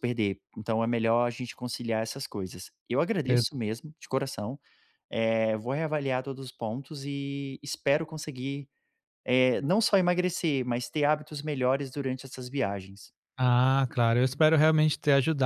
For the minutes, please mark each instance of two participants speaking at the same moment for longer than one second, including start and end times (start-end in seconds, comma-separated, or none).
none